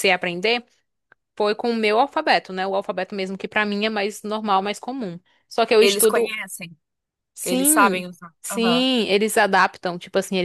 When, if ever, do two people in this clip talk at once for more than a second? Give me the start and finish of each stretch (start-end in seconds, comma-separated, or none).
7.4-8.9